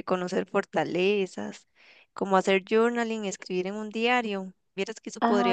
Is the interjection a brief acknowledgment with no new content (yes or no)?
yes